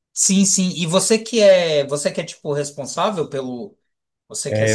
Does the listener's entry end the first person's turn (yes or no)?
yes